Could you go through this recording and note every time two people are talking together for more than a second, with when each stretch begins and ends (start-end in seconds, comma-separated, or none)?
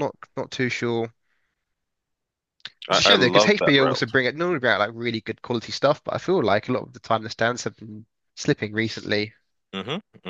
2.9-4.1